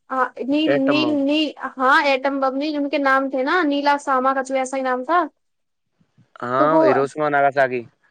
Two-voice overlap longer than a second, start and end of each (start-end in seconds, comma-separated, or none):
none